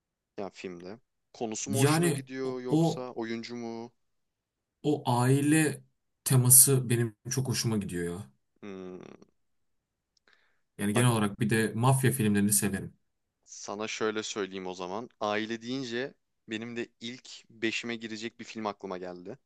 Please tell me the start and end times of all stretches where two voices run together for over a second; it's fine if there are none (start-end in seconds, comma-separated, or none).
1.6-3.1